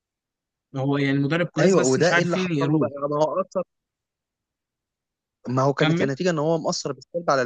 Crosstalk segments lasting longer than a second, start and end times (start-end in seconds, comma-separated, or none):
1.6-2.9